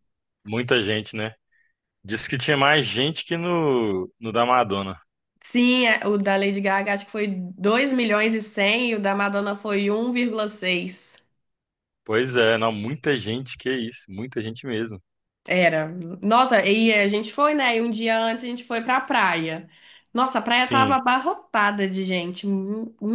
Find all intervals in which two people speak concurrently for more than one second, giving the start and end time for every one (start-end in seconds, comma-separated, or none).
none